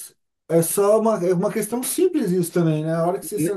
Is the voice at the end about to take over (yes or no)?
yes